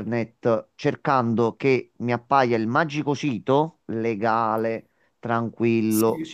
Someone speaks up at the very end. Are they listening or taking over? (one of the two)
listening